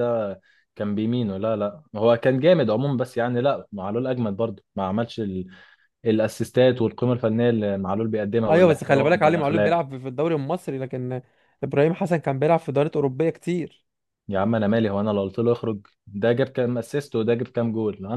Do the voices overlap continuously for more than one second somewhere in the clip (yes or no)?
yes